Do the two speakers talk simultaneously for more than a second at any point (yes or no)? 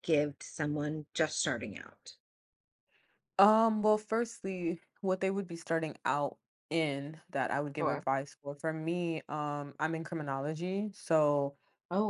no